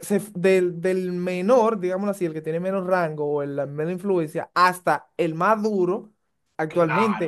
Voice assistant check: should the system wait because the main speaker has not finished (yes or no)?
yes